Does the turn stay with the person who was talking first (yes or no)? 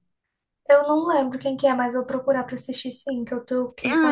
no